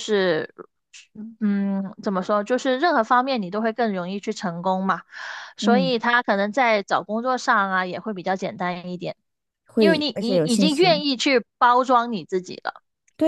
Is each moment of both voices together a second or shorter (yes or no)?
no